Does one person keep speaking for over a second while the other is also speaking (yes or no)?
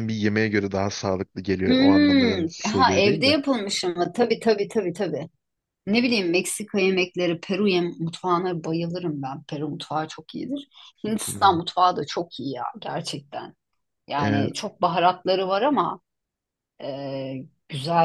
yes